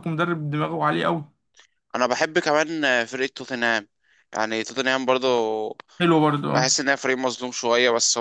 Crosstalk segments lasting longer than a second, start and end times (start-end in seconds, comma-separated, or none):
none